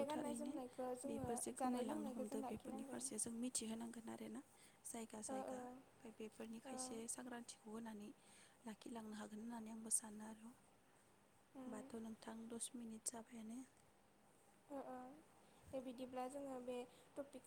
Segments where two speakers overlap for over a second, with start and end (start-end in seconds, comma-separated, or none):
1.6-3.0